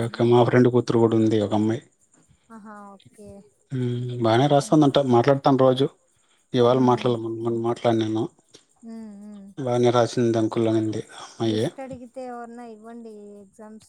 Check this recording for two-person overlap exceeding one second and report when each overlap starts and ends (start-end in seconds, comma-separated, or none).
none